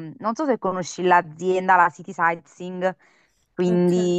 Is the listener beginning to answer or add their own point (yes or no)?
yes